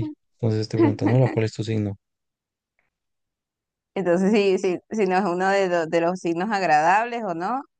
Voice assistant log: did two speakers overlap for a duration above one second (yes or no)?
no